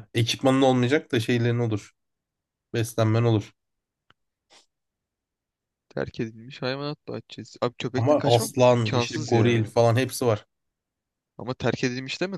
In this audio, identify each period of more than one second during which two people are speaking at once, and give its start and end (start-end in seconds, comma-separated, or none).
7.9-9.7